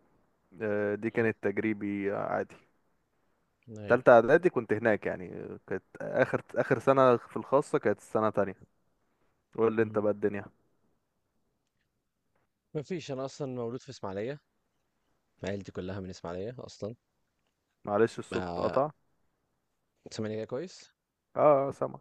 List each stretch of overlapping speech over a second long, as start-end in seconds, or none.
none